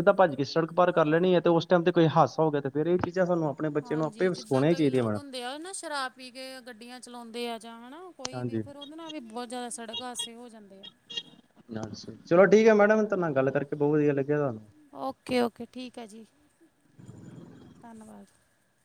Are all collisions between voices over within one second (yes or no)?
no